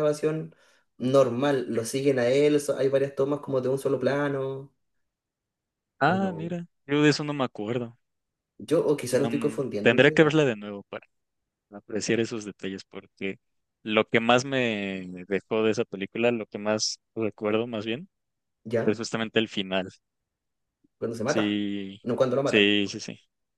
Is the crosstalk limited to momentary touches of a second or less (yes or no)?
no